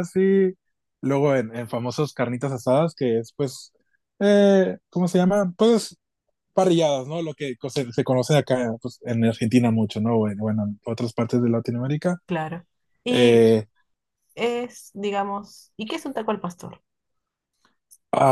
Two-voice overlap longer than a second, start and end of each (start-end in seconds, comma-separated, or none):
none